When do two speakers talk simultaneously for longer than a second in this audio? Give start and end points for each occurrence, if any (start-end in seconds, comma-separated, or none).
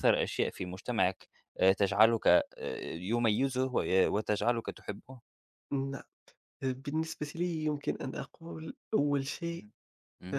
none